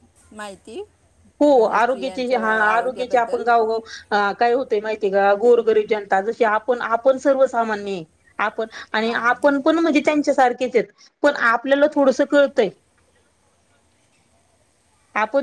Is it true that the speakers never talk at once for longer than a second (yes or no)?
no